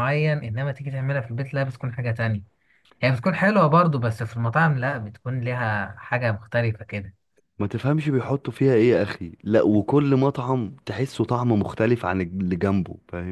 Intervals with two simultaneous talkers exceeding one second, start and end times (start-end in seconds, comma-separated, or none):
none